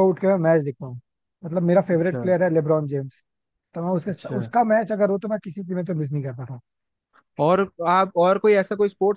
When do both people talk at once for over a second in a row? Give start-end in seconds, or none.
none